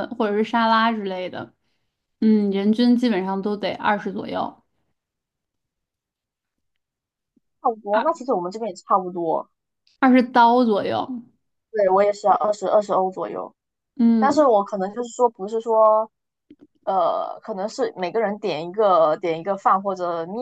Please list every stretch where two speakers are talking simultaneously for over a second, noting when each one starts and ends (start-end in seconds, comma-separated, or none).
none